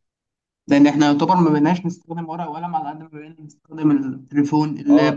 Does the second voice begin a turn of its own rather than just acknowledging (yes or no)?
yes